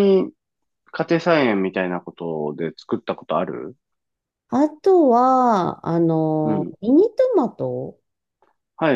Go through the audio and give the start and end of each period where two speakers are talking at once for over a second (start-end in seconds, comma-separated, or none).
none